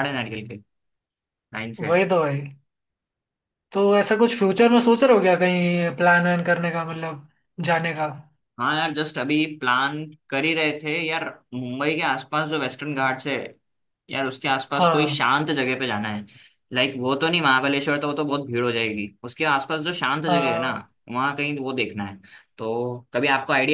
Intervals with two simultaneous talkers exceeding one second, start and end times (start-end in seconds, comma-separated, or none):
none